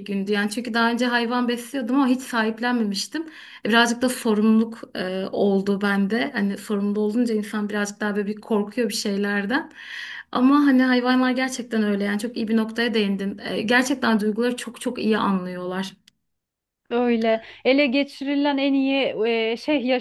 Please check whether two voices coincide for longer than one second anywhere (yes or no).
no